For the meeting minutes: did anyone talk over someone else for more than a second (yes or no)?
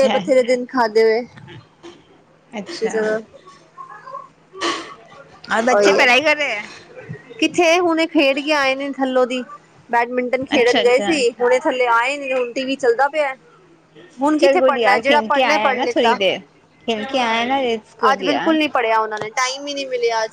yes